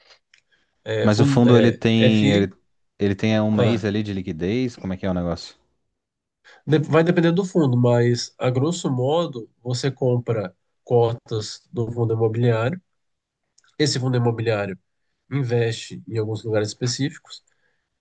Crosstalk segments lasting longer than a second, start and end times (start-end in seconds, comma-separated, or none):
1.0-2.5